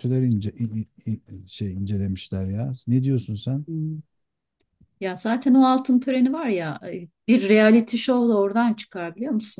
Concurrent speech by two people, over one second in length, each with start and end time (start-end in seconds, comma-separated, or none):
none